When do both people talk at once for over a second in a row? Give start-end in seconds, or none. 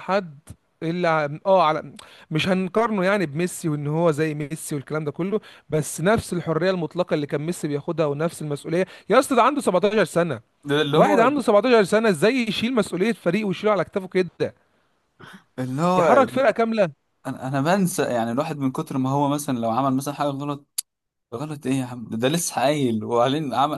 none